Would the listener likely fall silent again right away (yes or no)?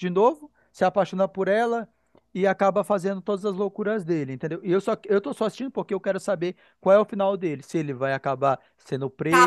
no